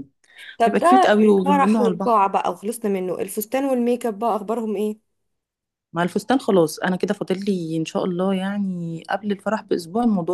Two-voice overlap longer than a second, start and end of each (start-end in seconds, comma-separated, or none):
0.7-2.2